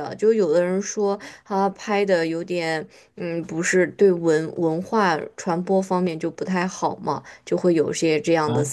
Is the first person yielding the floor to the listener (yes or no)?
yes